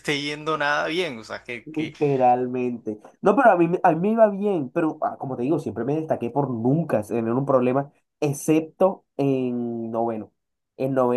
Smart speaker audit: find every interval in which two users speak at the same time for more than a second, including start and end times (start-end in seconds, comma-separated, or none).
none